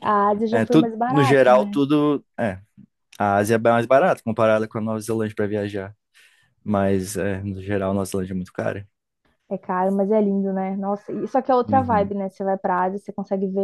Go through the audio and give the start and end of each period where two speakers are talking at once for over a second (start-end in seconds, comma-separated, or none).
0.5-1.8